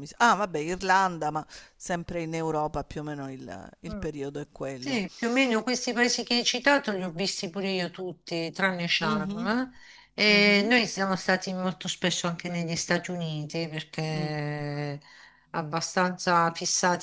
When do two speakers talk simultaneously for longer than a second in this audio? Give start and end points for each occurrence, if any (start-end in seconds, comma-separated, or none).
none